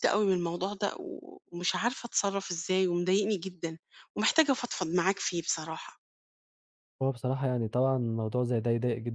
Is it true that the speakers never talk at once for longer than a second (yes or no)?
yes